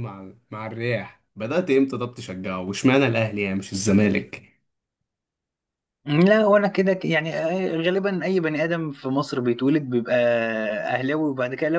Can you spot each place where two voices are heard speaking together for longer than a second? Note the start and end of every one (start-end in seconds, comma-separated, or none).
none